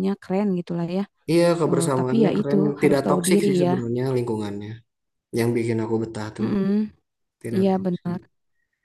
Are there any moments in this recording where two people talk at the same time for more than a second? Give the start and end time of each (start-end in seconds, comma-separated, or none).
1.7-3.7